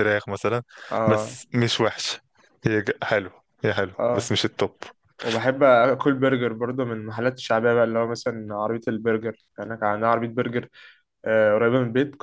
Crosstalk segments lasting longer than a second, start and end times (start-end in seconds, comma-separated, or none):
none